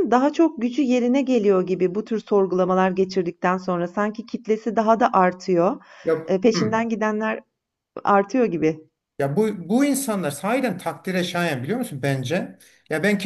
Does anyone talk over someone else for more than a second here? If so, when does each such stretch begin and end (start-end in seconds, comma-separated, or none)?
none